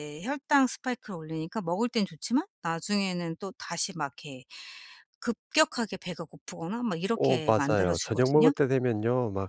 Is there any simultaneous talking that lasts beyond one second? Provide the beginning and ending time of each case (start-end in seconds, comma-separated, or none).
7.1-8.5